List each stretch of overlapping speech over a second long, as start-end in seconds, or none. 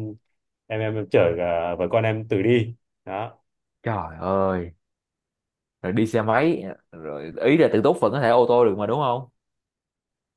none